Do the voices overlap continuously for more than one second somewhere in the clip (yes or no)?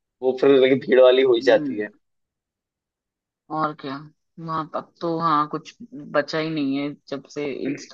no